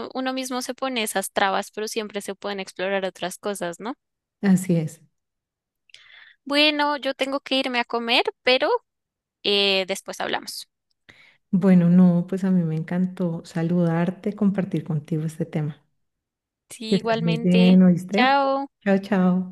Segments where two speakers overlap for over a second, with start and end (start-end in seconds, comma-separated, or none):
16.9-18.4